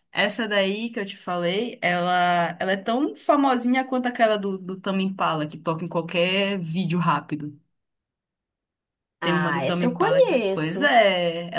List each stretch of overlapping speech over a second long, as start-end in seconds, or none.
9.2-10.9